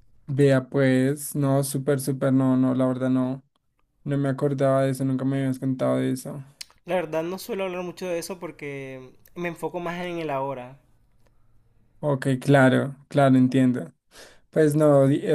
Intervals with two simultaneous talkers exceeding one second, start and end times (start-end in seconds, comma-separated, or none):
none